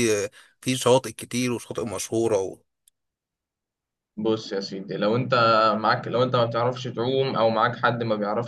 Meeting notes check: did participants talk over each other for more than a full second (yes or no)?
no